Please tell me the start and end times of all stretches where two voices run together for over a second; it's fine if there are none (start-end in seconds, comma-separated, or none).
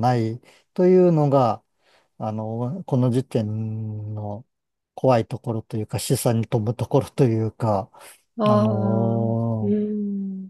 8.5-9.8